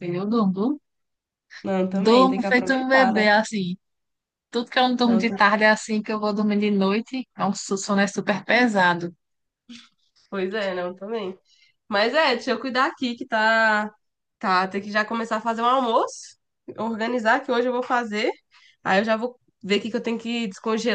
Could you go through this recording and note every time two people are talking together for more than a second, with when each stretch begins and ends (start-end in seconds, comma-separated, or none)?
1.9-3.3